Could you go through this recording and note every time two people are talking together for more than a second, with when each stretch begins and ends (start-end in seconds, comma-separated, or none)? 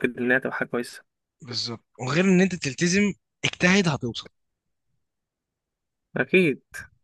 none